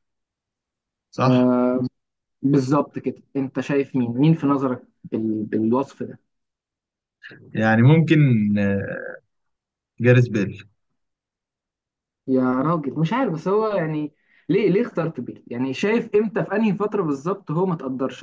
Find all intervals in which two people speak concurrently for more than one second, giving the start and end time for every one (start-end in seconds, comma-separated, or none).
none